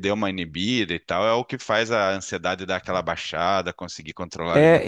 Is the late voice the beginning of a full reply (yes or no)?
yes